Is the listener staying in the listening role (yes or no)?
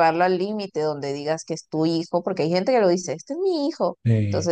yes